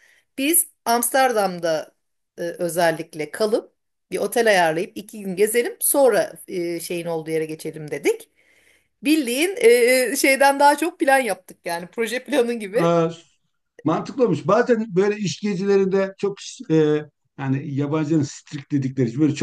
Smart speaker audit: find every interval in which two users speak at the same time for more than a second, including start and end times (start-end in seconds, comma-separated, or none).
none